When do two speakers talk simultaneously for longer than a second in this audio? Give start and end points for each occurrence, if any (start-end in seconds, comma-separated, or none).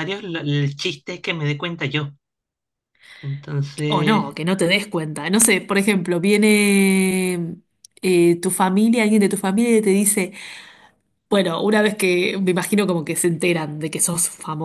none